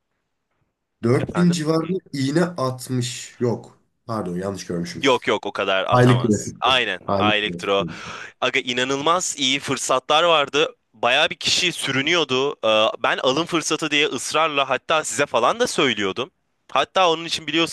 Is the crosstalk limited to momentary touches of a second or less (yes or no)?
no